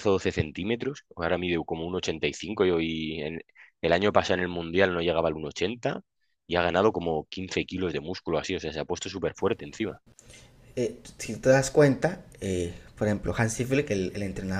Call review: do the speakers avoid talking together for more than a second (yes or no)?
yes